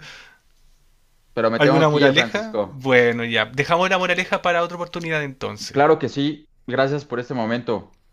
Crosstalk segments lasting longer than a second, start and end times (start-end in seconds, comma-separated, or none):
1.6-2.9